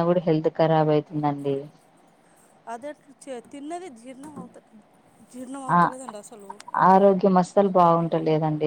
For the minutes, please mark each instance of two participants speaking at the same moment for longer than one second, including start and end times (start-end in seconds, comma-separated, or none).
none